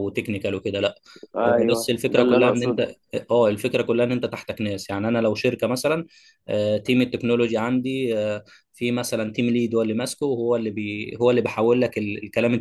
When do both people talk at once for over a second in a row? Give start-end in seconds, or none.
1.5-2.9